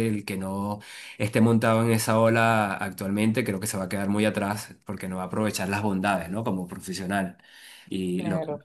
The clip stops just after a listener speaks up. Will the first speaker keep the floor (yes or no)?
no